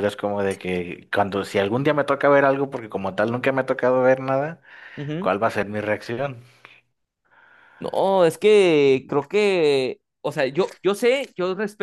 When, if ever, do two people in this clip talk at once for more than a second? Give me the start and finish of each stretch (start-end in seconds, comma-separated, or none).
none